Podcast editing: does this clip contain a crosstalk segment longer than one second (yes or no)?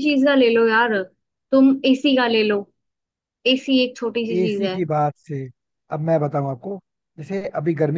no